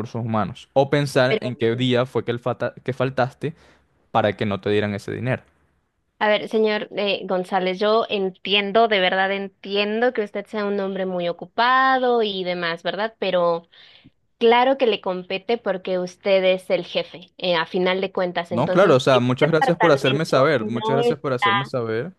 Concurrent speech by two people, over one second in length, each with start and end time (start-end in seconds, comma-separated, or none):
18.5-21.2